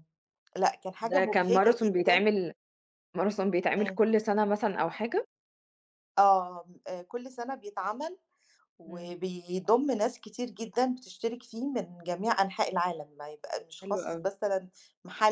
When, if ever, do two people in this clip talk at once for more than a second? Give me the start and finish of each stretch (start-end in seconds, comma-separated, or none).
1.0-2.2